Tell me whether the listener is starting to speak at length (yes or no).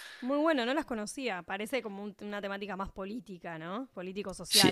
yes